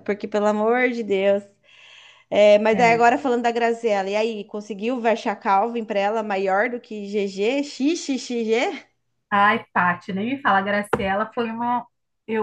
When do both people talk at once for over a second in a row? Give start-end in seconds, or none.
none